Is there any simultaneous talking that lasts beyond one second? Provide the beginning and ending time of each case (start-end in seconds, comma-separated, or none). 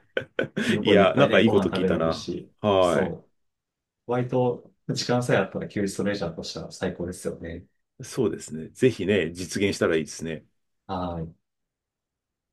0.8-3.1